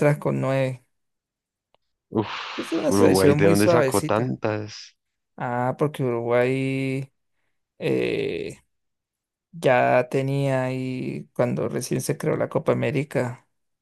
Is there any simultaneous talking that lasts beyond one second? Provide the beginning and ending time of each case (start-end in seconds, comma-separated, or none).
2.6-4.3